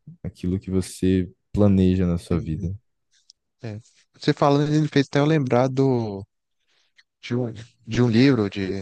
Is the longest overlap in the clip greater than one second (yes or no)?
no